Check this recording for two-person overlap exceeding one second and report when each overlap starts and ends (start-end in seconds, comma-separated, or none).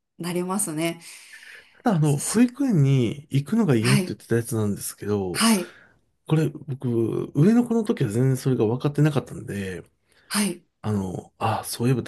none